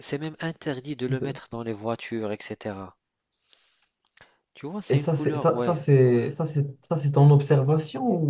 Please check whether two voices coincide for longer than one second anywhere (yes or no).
yes